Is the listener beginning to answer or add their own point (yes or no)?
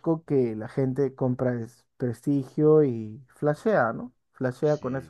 yes